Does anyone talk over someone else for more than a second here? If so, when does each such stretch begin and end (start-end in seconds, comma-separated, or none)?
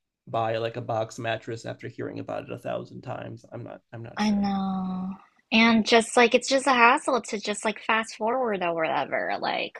none